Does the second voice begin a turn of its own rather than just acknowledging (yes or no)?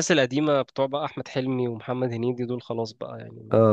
yes